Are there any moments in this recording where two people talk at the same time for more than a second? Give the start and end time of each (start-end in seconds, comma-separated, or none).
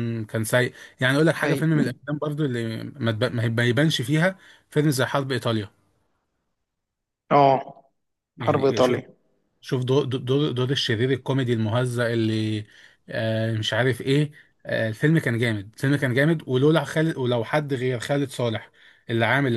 none